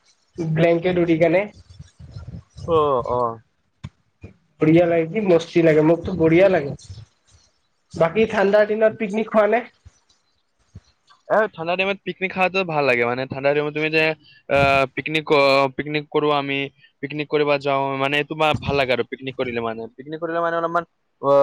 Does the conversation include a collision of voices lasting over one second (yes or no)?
no